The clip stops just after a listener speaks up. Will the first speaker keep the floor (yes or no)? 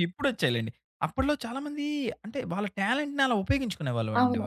no